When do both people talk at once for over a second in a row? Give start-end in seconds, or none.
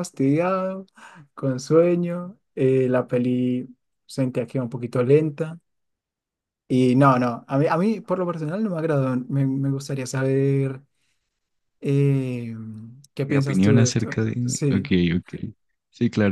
13.2-14.9